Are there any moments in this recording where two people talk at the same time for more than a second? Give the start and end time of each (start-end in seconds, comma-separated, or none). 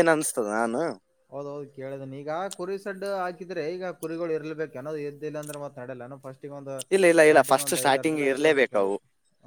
7.2-8.9